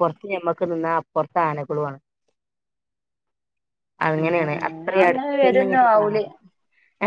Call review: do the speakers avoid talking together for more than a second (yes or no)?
no